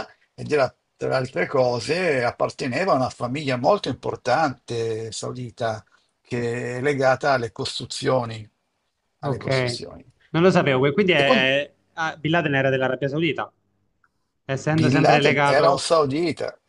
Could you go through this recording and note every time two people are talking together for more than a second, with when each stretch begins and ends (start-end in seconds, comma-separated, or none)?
14.7-15.9